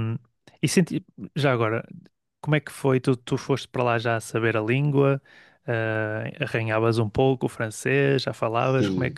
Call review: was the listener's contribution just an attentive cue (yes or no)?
no